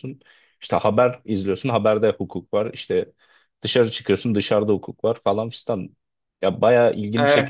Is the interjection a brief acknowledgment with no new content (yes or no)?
no